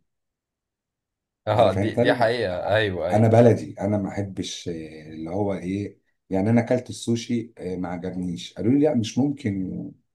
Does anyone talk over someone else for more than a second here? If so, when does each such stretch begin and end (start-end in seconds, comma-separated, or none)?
1.6-3.3